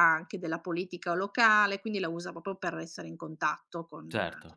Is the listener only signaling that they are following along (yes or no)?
yes